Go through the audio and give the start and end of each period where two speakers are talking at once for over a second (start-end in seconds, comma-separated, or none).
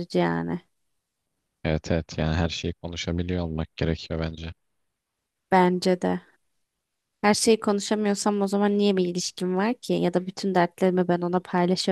none